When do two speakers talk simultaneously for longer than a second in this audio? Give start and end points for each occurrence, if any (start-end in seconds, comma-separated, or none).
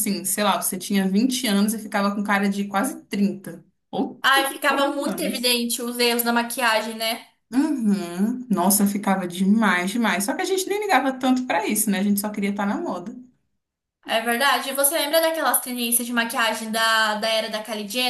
4.2-5.6